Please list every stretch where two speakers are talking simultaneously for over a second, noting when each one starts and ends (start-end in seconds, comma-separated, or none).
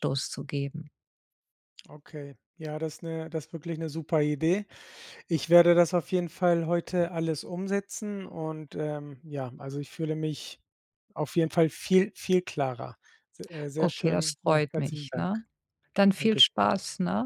13.8-15.3